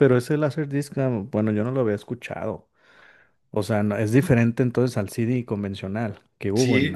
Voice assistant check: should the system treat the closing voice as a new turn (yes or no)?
yes